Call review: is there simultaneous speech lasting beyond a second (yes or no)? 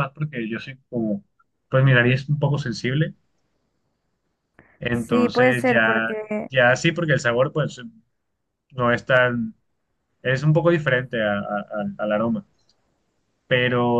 yes